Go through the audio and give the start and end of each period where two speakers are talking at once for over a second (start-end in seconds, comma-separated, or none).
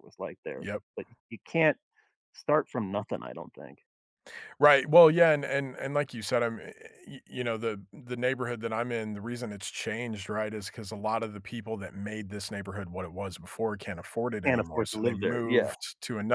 14.4-15.7